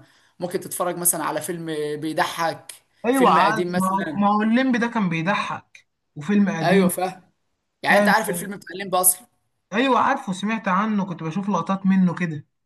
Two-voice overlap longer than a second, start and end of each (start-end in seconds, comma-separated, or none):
3.1-4.4